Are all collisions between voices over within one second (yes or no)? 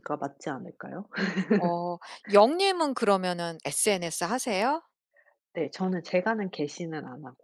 yes